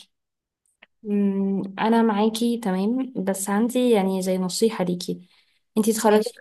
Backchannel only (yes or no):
yes